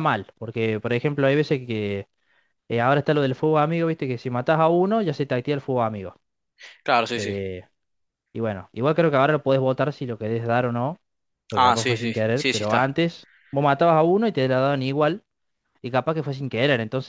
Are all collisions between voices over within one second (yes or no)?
no